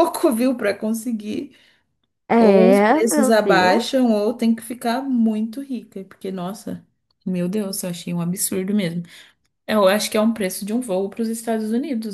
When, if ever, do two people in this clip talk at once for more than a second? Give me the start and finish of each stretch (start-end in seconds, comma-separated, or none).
2.4-4.0